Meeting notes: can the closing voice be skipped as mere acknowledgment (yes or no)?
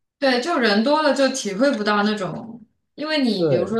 yes